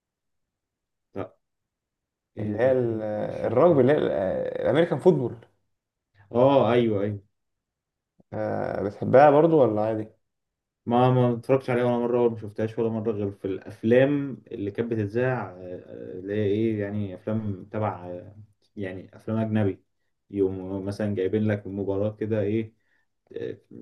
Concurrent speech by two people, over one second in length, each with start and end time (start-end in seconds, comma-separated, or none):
2.4-3.8